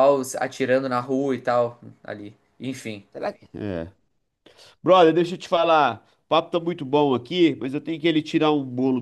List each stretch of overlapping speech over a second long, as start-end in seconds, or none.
none